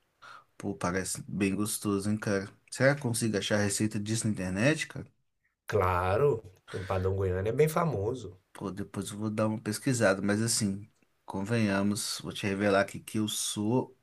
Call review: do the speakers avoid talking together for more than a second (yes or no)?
yes